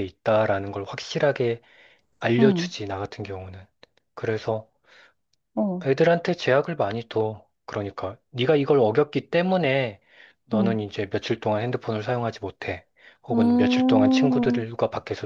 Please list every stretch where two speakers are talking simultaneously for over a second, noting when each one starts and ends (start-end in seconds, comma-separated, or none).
13.3-14.7